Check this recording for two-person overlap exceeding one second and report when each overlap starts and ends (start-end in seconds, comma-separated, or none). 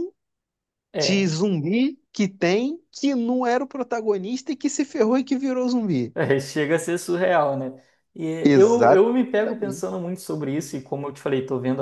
8.4-9.8